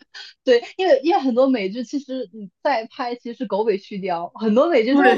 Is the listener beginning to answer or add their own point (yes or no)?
yes